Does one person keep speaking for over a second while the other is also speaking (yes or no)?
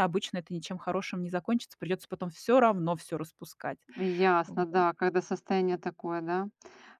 no